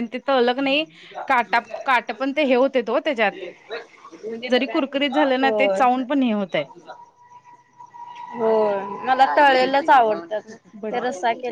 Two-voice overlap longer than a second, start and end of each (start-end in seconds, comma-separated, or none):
none